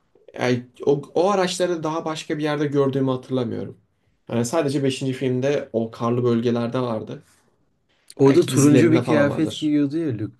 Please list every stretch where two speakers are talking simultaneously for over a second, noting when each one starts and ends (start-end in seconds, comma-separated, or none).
8.2-9.7